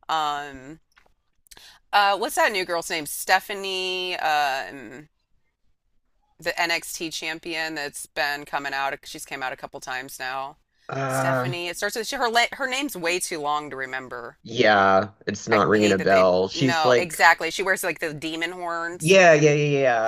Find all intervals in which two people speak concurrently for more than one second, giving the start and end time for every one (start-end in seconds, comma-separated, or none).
15.5-17.2